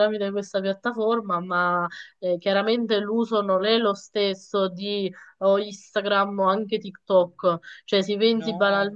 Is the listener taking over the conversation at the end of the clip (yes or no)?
no